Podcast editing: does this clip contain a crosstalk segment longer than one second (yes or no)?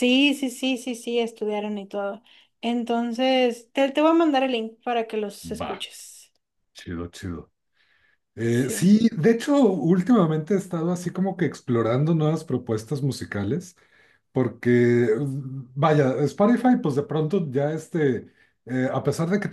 no